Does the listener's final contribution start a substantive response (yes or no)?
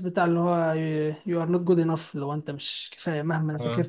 no